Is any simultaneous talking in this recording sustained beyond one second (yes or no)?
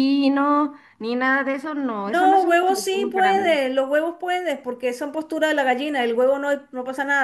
yes